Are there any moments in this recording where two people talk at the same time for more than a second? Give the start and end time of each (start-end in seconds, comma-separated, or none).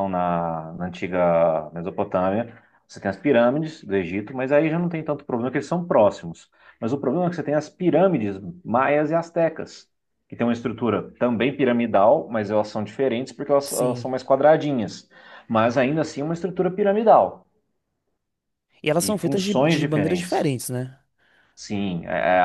19.0-20.5